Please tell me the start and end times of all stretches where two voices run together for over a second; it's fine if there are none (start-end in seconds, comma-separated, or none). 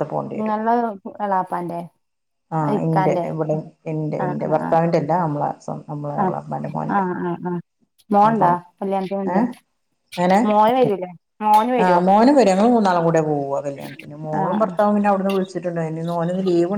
none